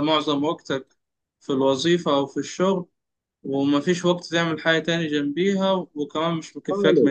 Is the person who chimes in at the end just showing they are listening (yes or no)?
no